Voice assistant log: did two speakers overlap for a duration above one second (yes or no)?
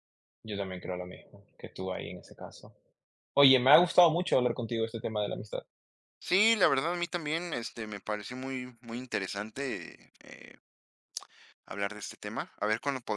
no